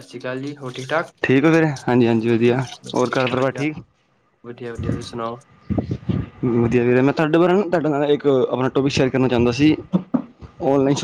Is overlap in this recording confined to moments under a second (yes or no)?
yes